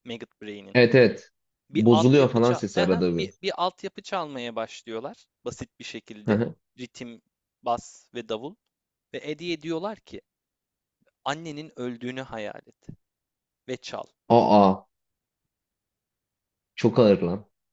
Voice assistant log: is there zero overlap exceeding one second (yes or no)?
no